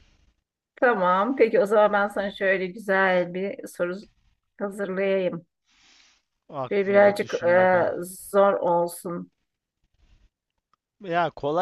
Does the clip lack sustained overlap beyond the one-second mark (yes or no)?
no